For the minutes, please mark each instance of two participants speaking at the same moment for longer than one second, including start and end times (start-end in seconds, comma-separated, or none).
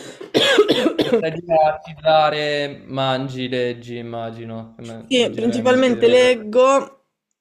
5.1-6.3